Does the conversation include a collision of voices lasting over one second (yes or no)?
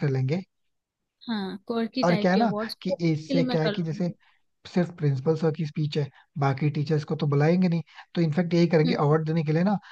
yes